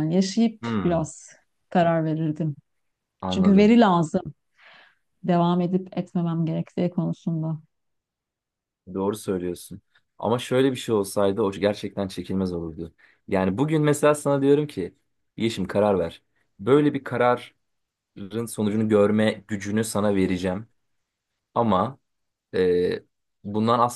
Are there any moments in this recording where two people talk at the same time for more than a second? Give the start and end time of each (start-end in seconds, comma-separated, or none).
none